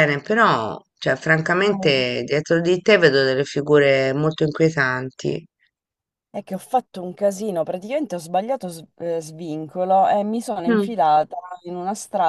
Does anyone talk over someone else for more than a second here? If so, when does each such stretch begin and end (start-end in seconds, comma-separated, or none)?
none